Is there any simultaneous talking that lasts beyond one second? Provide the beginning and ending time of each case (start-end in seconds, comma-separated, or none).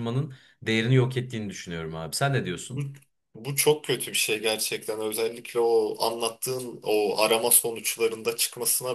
none